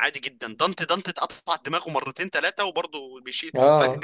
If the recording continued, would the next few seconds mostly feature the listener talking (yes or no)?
no